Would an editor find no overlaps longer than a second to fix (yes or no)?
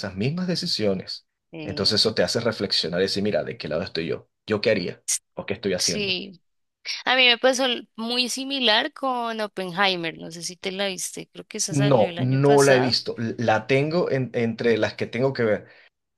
no